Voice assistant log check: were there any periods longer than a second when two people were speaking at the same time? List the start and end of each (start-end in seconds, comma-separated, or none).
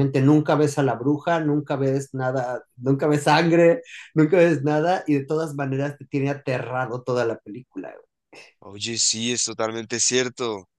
none